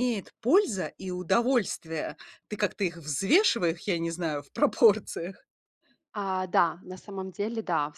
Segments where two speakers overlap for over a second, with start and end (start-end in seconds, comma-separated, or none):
none